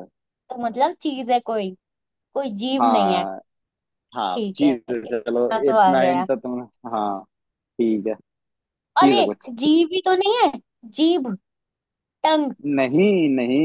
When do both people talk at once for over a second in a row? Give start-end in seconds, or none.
4.3-6.3